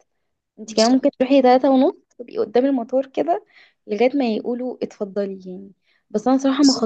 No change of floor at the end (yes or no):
yes